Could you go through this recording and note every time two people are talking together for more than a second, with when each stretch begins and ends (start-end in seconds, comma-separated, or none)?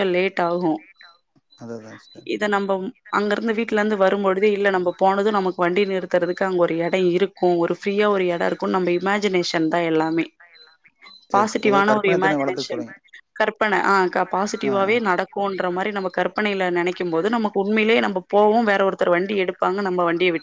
11.3-12.8